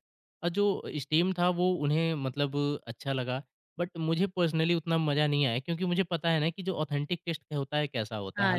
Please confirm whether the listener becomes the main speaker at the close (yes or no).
yes